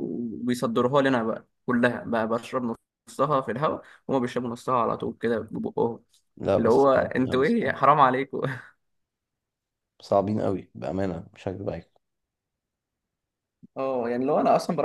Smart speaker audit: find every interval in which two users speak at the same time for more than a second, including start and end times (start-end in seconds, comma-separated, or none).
6.6-7.8